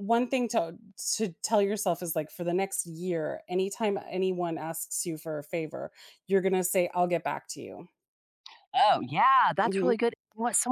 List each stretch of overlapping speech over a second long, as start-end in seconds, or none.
none